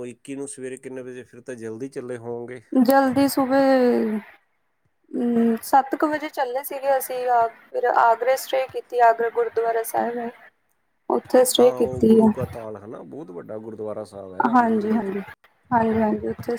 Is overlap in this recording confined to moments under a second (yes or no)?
yes